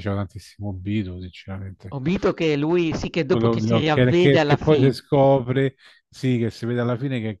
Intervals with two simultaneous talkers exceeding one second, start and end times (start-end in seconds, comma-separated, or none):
3.3-5.0